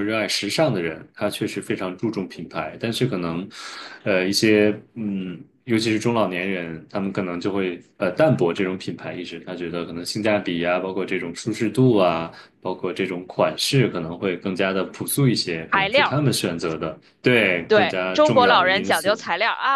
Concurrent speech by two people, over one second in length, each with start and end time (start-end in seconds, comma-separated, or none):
17.7-19.2